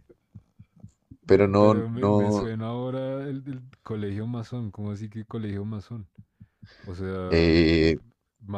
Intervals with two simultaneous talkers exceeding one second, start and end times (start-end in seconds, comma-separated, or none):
1.3-2.5